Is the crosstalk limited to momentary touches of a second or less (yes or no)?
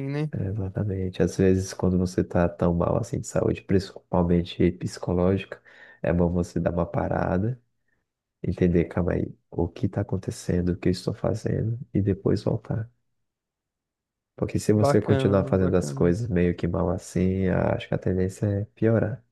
no